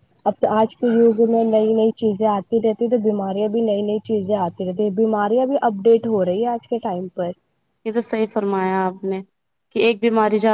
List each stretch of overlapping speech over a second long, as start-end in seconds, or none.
none